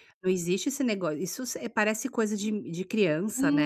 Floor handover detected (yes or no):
yes